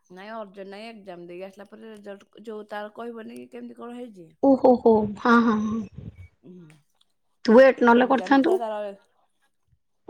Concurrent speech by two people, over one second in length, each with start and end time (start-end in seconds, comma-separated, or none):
none